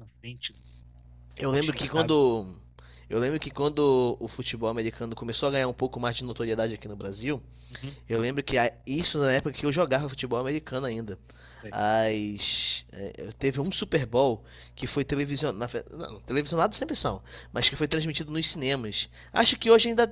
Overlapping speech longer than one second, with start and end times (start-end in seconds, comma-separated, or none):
none